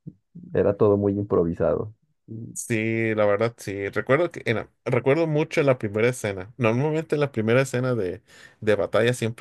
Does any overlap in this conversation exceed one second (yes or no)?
no